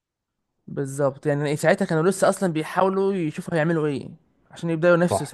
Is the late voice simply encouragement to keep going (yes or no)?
no